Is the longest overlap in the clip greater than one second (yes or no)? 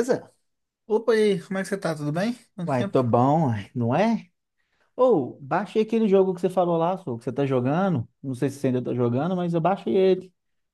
no